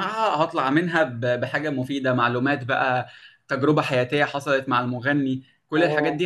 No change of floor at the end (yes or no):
yes